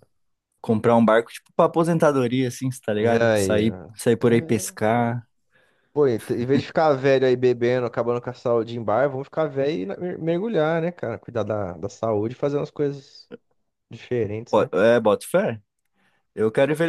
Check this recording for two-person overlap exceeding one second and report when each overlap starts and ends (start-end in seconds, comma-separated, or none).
3.2-5.2